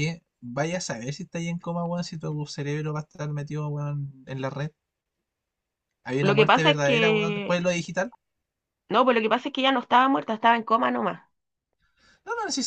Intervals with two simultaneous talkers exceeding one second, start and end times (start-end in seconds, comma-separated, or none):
6.2-7.6